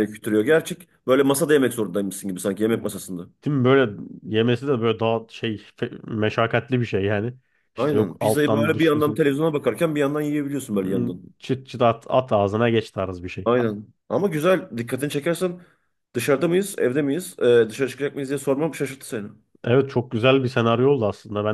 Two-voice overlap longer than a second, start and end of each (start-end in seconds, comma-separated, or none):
7.8-9.2